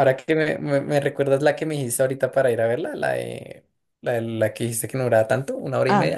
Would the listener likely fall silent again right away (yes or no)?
no